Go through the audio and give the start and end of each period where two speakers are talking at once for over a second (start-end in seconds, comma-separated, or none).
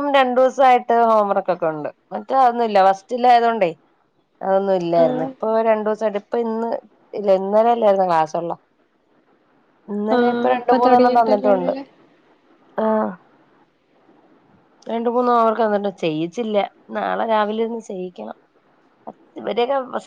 10.2-11.7